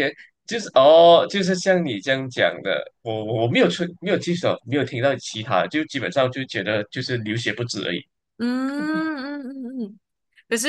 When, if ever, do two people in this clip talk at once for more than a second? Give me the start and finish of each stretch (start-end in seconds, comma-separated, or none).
none